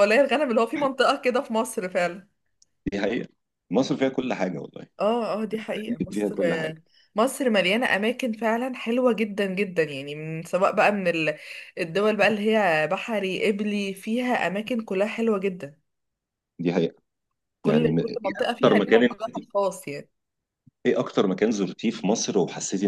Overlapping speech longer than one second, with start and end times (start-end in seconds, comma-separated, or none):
17.6-19.2